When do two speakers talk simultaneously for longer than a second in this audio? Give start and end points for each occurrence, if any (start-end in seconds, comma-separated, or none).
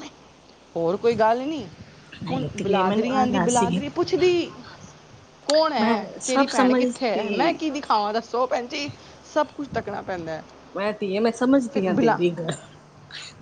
2.3-3.8, 5.8-7.6